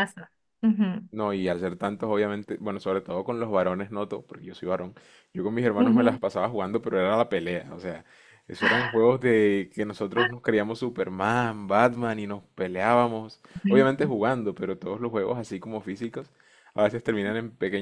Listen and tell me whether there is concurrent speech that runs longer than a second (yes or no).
no